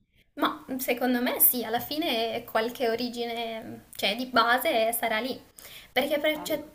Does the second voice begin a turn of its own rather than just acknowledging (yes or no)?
no